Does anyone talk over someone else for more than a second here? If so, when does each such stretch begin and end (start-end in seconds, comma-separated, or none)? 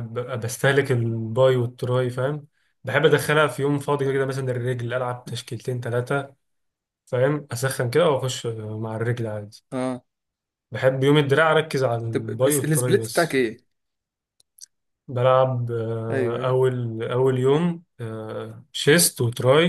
12.1-13.4